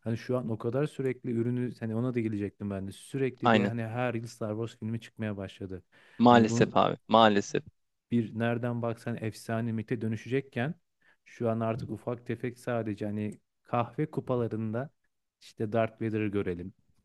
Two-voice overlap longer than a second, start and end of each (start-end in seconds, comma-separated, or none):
none